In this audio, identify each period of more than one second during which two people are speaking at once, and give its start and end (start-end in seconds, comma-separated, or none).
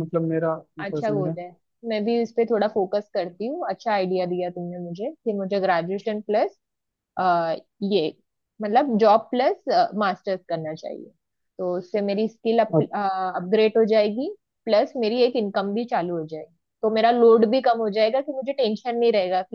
none